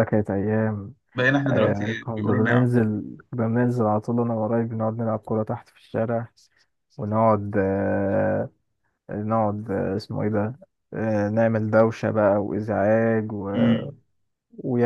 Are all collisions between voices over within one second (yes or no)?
no